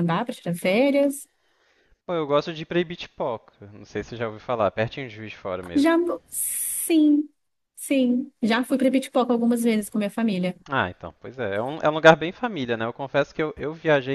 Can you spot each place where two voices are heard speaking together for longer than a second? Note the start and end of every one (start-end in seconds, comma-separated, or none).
none